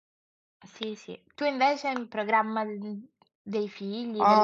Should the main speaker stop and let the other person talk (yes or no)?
yes